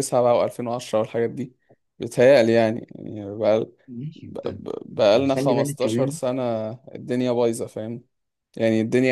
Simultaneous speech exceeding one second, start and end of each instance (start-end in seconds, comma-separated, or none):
4.2-6.2